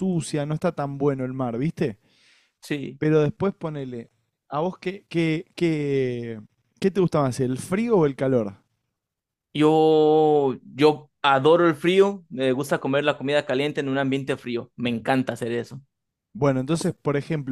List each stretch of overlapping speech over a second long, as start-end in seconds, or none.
none